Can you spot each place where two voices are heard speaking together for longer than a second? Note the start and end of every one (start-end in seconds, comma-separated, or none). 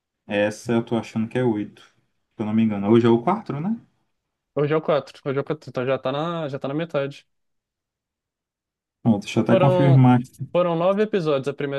none